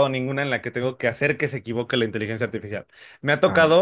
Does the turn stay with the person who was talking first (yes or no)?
yes